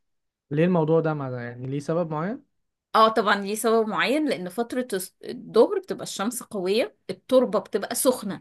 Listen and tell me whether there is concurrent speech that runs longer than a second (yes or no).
no